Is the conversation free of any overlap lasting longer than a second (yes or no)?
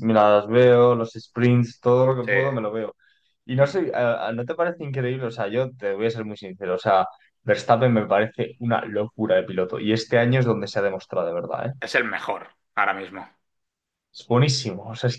yes